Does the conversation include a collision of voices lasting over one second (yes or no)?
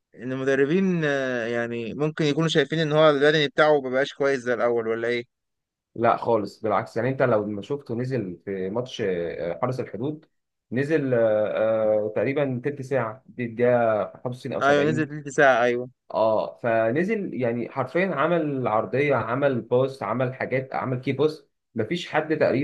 no